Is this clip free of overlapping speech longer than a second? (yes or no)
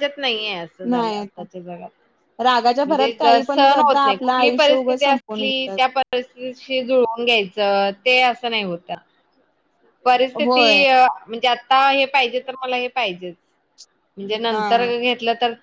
no